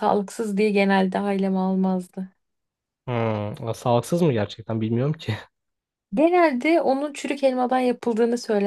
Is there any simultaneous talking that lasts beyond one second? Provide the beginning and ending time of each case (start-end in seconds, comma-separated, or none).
none